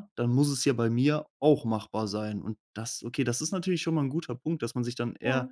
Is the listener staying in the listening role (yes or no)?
yes